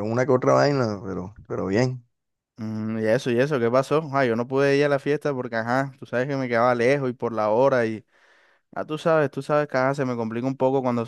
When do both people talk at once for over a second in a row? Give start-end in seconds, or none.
none